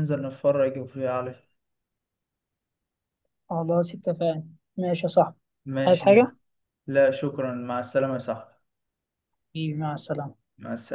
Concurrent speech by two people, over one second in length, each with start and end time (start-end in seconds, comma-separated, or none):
none